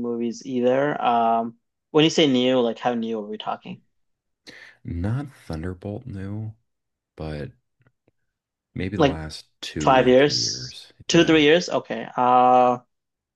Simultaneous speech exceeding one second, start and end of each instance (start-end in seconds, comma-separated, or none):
9.8-11.4